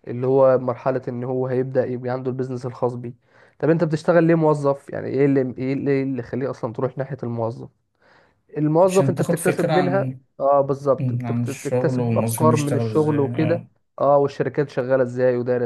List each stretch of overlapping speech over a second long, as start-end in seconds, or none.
8.8-10.2, 11.0-13.6